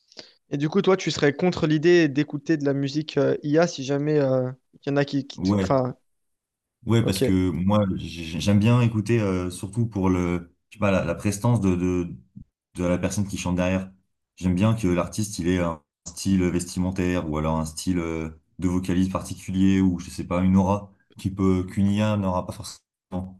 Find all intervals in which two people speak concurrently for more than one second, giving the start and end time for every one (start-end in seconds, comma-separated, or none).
none